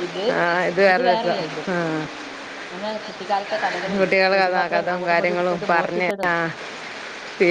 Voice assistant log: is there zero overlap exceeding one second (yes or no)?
no